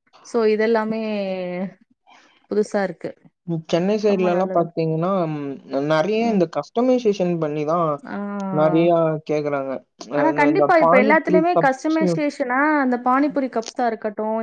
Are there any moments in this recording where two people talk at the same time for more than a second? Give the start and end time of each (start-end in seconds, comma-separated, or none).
10.3-12.0